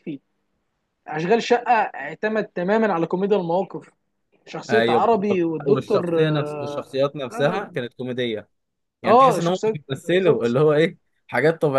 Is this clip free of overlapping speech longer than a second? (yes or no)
no